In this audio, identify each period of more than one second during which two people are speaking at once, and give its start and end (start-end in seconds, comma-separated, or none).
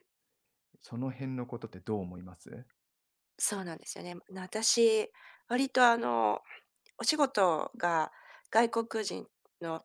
none